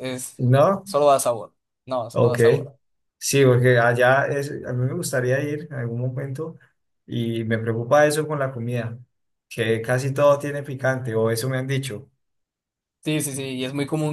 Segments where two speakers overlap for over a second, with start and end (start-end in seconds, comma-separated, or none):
none